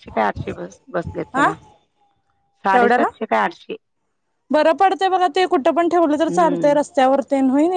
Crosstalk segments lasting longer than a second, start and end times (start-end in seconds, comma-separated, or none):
none